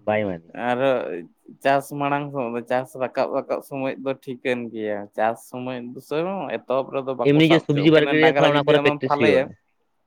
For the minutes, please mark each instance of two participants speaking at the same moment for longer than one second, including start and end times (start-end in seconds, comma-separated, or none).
7.3-9.4